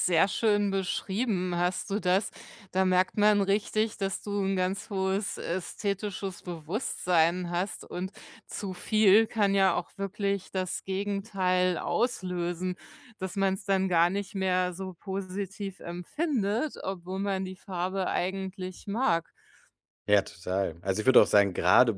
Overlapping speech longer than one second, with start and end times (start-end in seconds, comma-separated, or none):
none